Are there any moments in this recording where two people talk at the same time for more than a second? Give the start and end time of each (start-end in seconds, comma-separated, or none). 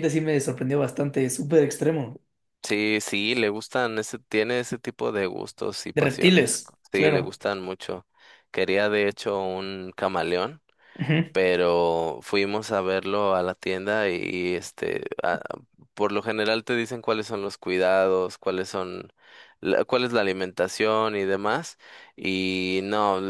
5.9-7.4